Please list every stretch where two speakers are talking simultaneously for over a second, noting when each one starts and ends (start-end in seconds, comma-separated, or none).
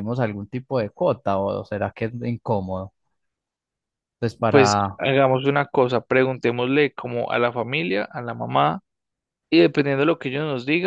none